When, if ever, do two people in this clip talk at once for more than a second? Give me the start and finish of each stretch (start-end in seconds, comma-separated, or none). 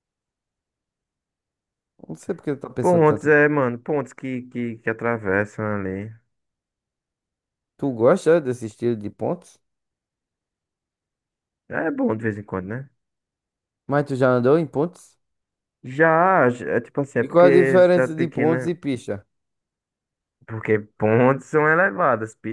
17.1-18.7